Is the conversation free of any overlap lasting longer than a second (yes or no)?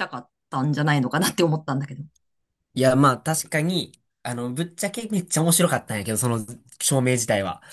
yes